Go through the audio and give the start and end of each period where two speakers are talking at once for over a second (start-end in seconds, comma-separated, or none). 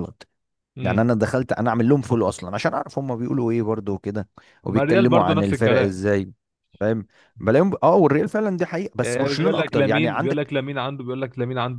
4.7-6.0, 9.0-10.5